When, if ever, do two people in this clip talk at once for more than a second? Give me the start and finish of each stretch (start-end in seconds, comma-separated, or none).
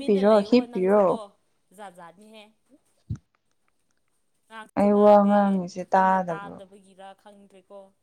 4.8-6.6